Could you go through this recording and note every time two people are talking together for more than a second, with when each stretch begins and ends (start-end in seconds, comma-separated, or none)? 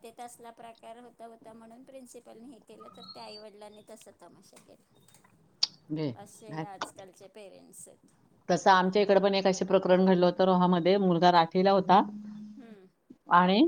none